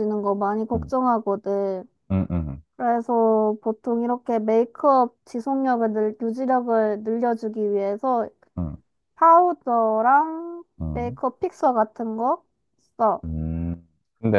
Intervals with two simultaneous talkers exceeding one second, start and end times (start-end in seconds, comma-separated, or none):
none